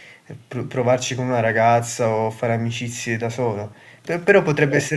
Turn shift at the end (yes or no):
no